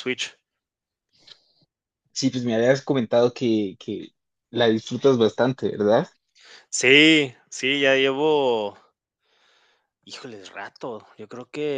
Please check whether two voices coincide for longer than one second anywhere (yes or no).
no